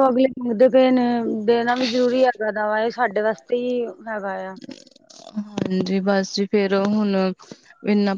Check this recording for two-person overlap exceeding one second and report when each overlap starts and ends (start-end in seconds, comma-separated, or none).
none